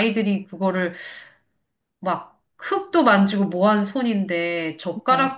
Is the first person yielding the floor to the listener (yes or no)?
no